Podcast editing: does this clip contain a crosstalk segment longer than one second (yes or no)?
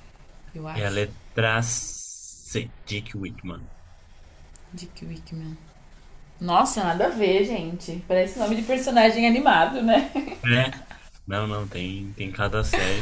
no